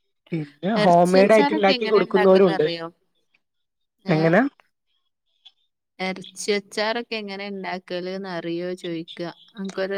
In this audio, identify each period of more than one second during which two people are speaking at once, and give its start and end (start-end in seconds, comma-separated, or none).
0.8-2.6